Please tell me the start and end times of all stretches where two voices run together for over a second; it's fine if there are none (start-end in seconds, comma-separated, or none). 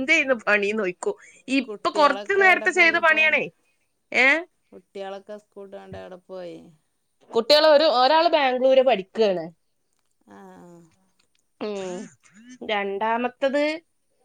1.7-3.2